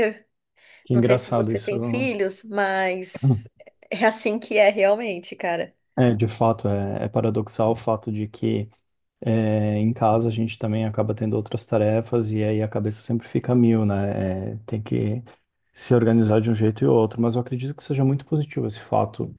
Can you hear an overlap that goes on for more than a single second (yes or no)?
yes